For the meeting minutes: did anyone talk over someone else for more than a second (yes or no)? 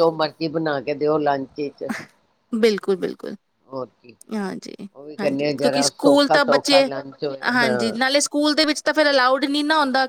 yes